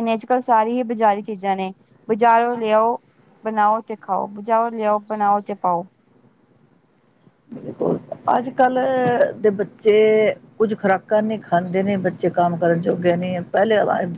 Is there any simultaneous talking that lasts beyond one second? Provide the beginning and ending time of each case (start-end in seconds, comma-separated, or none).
none